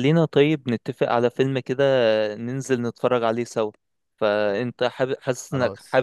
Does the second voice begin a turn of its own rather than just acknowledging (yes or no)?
no